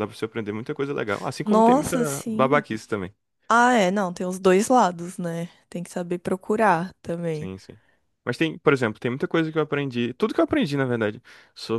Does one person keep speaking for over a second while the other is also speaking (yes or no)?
yes